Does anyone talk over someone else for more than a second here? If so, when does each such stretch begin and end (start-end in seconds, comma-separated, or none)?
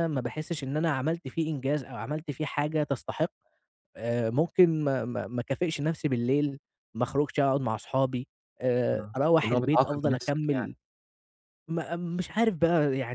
8.9-10.7